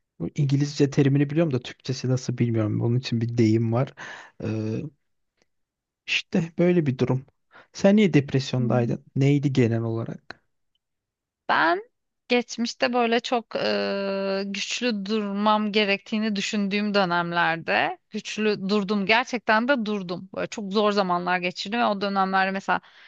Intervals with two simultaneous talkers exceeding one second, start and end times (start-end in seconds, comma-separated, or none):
none